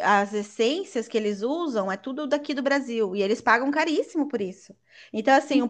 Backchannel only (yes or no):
yes